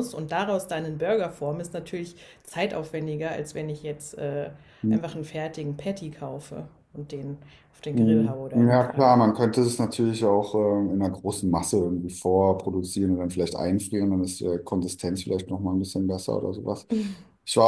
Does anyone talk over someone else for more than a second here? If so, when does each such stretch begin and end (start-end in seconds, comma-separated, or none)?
7.9-9.2